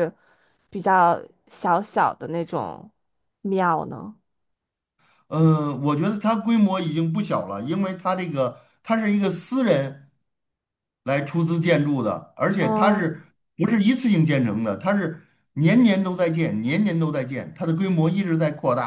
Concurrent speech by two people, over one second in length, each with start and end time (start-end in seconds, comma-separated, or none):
none